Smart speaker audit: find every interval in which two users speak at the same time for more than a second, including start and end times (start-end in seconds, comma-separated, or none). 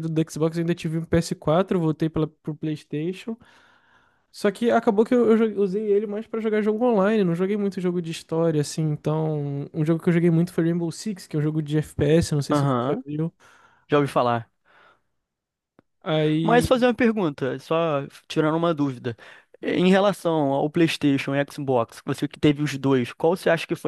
none